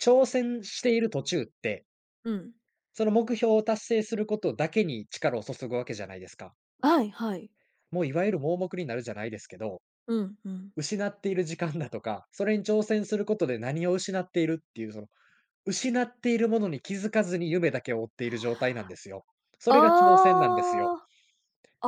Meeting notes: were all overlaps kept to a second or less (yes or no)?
no